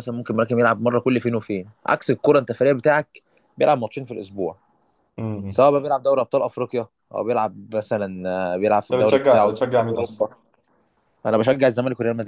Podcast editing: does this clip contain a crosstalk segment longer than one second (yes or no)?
yes